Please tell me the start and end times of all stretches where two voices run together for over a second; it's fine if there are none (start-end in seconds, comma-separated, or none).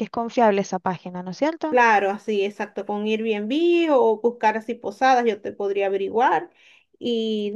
none